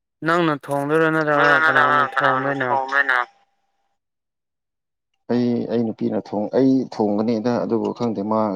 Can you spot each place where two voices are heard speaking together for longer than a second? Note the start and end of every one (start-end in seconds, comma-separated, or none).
1.3-2.7